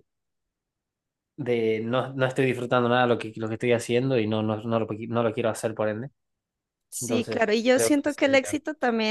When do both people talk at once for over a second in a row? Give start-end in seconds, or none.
7.0-8.6